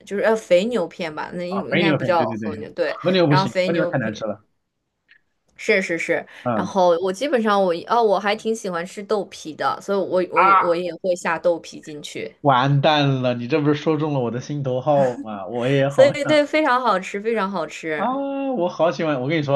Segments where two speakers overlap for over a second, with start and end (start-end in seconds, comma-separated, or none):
1.5-4.3